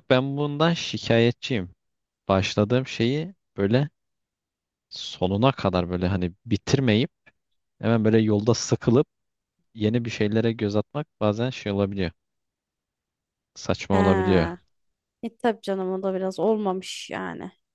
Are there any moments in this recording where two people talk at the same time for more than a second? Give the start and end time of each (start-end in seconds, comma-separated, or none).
none